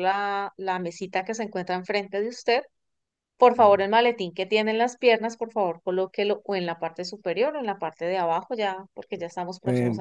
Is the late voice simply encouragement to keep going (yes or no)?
no